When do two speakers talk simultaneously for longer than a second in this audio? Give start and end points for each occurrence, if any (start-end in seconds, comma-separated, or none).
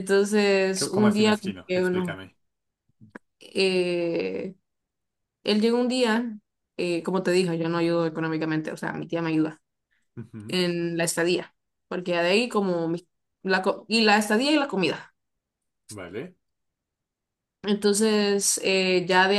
0.7-2.2